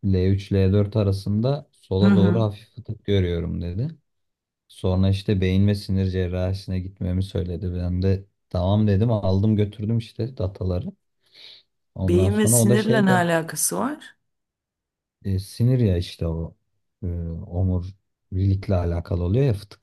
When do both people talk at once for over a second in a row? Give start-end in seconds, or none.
12.0-13.3